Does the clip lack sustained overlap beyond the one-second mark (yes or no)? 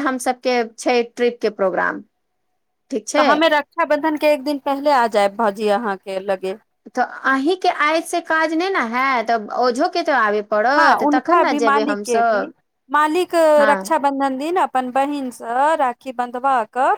no